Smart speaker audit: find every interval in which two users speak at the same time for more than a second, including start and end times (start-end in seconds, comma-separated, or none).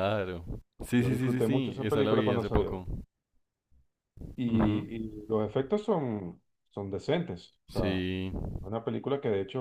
1.0-2.8